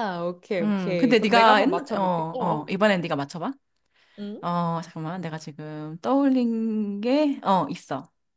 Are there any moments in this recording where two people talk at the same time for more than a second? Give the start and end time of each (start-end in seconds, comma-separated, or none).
0.6-2.6